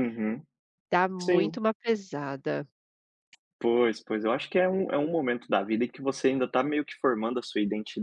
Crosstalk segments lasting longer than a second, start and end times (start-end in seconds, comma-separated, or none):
none